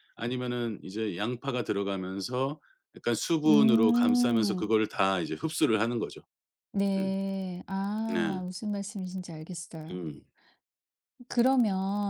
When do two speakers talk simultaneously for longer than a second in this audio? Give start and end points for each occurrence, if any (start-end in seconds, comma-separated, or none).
3.5-4.7